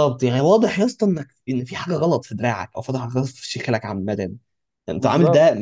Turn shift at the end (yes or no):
no